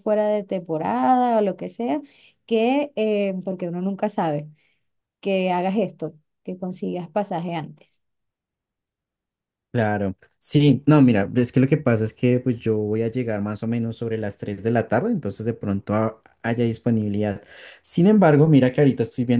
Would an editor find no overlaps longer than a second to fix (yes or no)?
yes